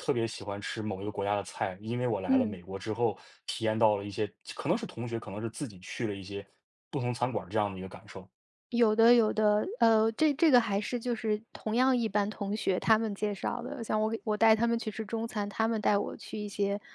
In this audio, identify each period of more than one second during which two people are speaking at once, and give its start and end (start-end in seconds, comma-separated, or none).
none